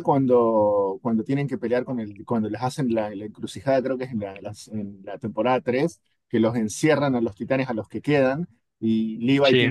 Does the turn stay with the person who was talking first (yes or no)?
yes